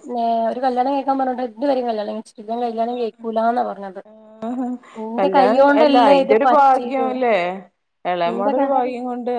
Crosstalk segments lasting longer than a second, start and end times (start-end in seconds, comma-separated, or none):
5.2-7.1